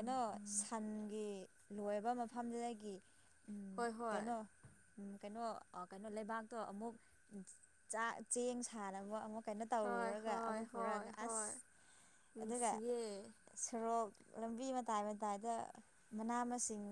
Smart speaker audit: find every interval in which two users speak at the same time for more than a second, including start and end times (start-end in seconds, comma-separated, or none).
9.8-11.5